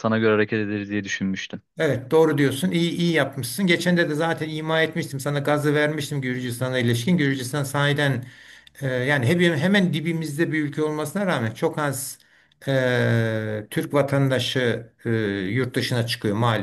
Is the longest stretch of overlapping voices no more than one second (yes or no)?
yes